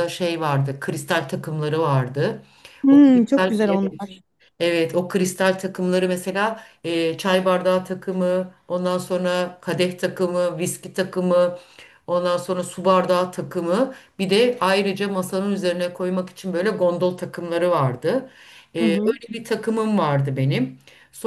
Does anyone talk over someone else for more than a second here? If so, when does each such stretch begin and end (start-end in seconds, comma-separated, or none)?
2.9-4.1